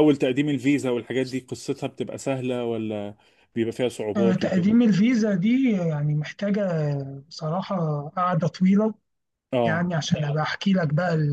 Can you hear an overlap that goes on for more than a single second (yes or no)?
no